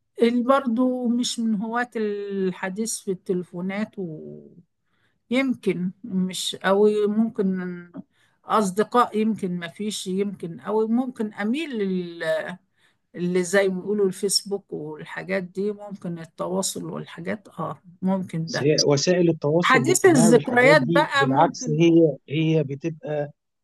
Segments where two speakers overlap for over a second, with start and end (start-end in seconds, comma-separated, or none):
19.6-21.8